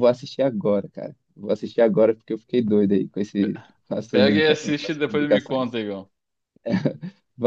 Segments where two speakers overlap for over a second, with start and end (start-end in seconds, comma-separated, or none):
4.1-5.8